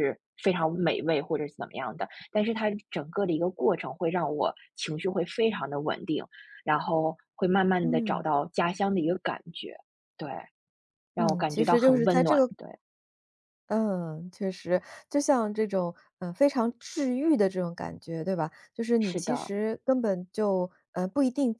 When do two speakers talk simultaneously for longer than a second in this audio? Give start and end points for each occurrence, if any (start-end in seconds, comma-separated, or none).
11.2-12.5